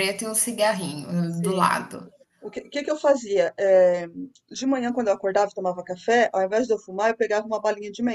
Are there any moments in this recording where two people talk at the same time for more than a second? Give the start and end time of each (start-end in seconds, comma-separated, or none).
none